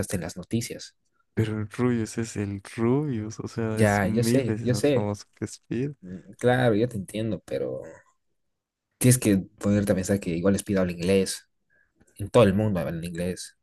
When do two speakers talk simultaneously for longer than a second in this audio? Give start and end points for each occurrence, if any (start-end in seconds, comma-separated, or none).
3.7-5.1